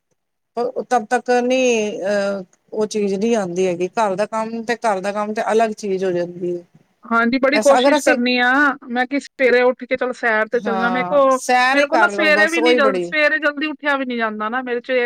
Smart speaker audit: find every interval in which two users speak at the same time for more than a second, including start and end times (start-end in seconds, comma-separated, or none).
10.7-13.0